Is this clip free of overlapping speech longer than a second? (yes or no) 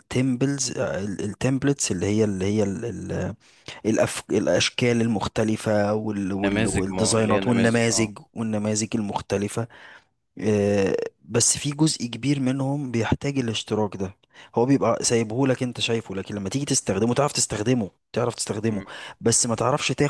no